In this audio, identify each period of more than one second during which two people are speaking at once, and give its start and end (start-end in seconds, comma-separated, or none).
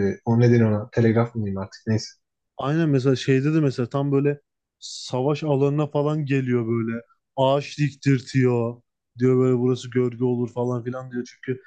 none